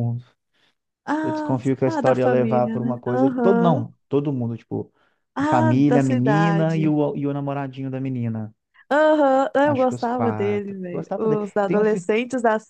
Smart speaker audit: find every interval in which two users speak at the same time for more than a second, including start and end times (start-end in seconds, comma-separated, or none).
1.2-3.8, 5.4-7.0, 9.6-12.1